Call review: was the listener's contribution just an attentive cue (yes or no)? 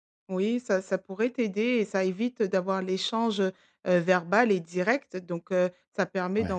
yes